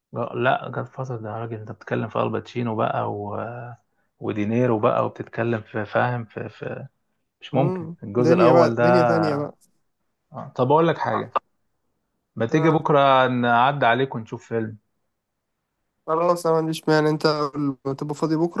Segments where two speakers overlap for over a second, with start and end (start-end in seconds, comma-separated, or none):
8.2-9.5